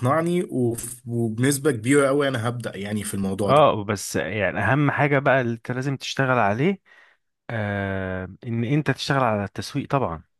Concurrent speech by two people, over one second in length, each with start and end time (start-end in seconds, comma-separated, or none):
none